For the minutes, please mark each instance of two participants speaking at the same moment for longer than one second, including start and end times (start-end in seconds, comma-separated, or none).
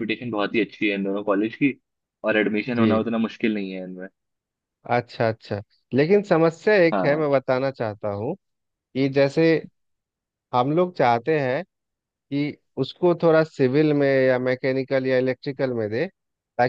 none